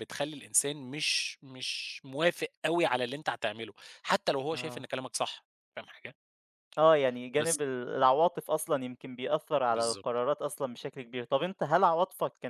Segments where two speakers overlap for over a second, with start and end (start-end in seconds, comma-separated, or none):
none